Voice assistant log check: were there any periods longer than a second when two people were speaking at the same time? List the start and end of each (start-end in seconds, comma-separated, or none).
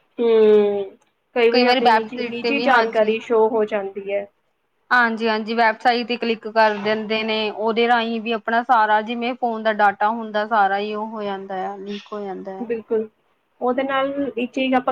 1.8-3.1